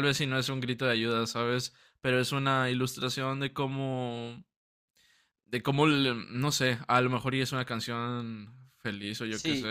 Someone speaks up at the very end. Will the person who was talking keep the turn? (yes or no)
no